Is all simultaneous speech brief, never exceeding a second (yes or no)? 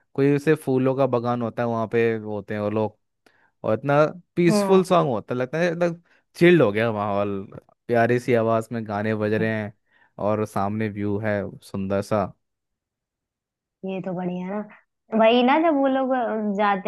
yes